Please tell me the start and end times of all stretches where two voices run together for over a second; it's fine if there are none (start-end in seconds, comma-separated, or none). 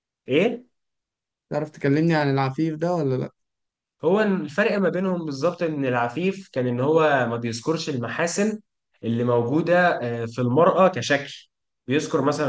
none